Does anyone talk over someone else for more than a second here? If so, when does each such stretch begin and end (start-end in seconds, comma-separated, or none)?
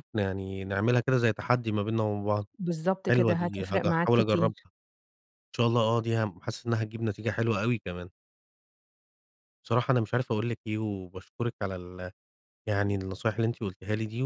3.1-4.7